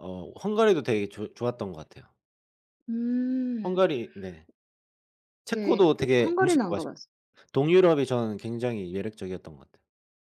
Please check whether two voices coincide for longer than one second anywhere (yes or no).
yes